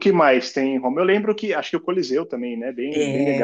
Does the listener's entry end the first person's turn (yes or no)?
yes